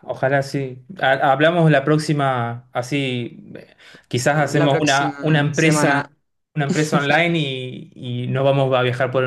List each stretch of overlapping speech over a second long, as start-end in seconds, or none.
4.3-6.1